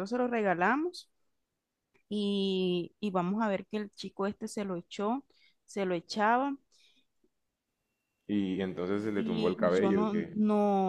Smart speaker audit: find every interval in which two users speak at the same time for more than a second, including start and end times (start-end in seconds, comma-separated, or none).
9.1-10.3